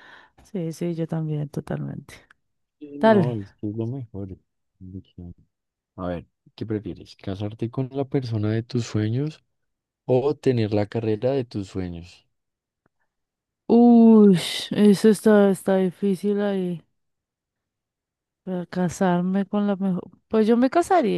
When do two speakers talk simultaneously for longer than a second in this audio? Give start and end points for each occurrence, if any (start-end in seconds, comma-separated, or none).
none